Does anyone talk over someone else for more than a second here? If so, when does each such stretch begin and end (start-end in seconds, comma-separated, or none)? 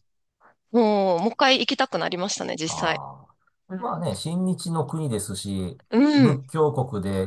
none